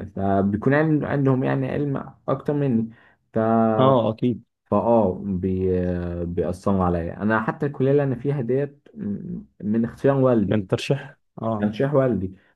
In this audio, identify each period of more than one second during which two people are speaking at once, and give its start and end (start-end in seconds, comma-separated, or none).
none